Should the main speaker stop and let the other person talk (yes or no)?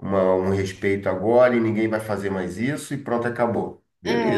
yes